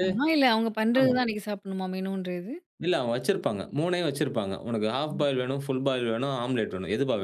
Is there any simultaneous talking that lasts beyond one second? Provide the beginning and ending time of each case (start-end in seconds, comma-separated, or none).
none